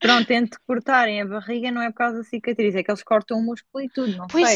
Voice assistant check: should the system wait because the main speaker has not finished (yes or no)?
no